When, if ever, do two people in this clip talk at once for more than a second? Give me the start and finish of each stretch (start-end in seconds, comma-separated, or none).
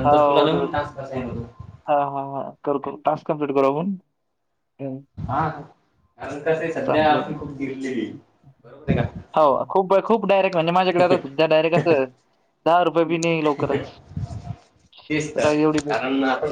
6.9-8.1